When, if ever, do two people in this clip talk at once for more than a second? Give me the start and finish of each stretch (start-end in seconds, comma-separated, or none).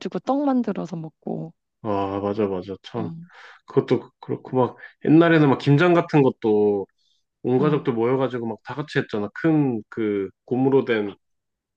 none